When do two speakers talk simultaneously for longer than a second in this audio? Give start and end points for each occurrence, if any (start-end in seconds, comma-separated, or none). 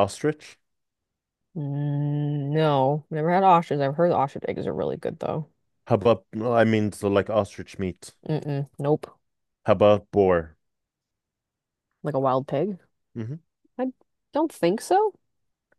none